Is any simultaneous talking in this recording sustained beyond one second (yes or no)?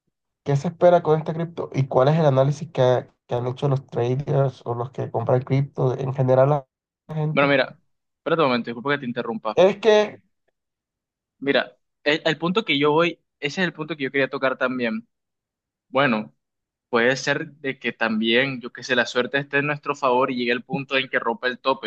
no